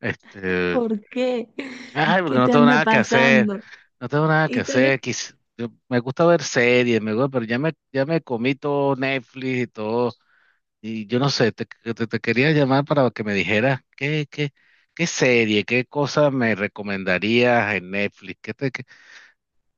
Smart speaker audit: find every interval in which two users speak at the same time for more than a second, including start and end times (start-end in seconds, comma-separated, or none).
2.2-3.5